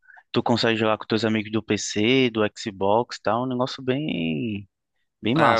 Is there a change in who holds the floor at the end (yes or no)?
yes